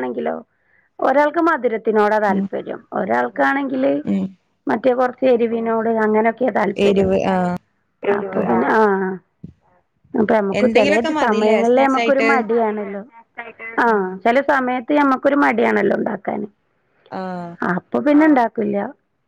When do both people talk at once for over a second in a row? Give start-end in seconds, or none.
10.6-12.3